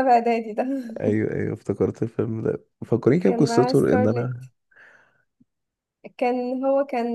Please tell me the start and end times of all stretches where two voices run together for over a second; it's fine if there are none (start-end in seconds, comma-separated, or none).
3.2-4.5